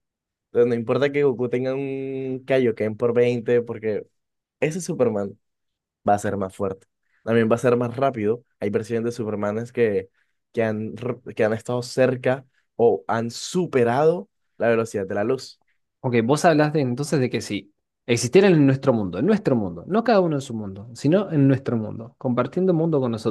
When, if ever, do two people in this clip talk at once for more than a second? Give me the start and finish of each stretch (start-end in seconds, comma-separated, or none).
none